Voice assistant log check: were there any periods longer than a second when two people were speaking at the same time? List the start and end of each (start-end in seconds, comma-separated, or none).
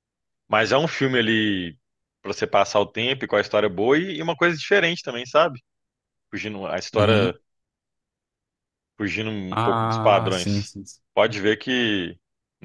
9.5-10.7